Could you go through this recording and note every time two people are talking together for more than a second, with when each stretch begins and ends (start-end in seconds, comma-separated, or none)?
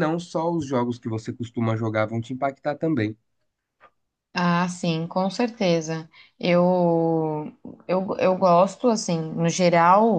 none